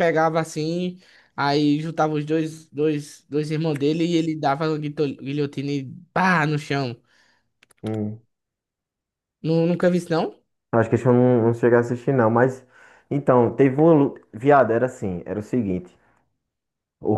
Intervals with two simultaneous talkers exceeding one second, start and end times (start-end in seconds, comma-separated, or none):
none